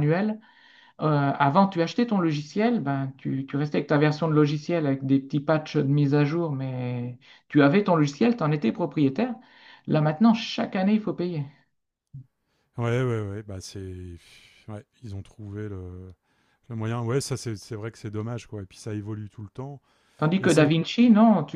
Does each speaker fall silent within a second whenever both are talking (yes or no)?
yes